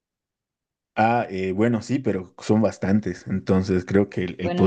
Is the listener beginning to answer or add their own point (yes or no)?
no